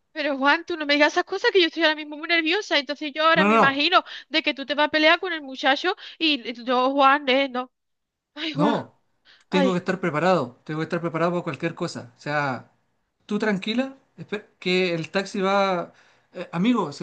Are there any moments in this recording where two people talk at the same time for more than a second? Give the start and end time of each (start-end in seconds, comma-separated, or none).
none